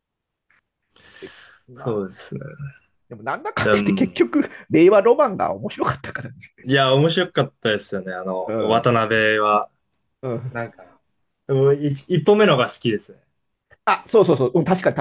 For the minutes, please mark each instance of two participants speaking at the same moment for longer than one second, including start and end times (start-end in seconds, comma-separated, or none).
none